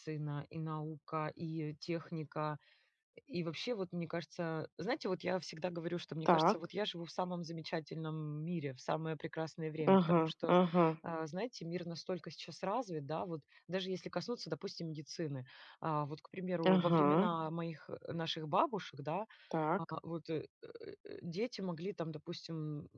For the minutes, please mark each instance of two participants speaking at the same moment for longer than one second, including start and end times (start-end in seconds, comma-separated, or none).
none